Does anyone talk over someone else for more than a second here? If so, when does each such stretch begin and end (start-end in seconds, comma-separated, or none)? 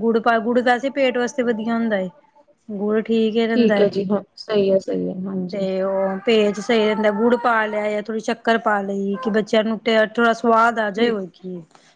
none